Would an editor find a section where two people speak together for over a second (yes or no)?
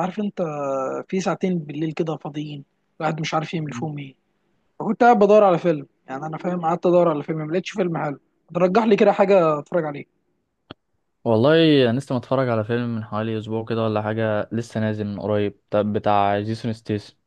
no